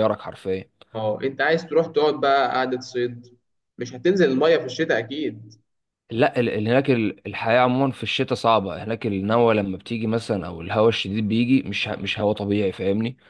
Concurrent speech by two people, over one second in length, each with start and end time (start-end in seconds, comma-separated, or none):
none